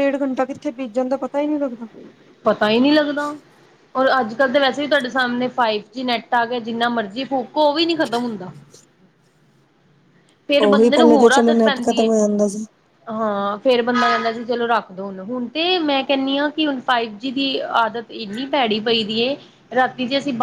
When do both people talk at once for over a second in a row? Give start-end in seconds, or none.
10.7-12.1